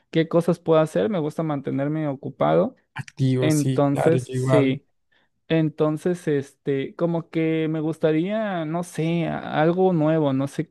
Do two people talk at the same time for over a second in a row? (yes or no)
yes